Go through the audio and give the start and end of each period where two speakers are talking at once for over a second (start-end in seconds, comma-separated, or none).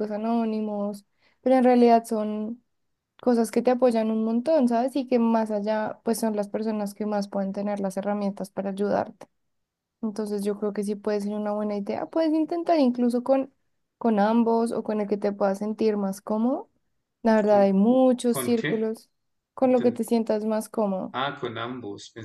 none